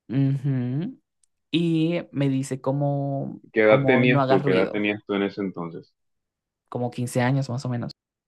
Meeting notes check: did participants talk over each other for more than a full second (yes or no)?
yes